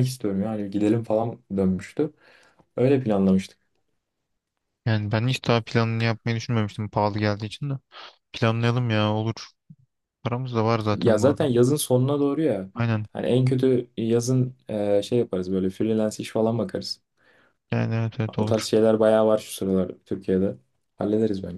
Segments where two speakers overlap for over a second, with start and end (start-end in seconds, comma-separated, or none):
none